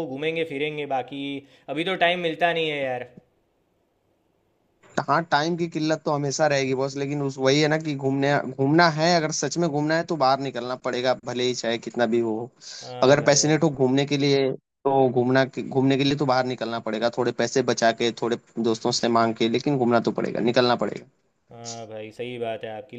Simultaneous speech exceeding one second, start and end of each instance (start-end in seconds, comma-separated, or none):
none